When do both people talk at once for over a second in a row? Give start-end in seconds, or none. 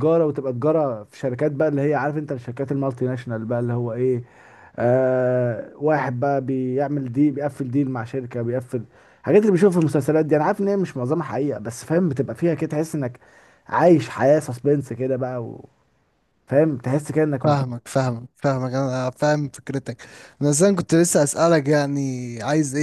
none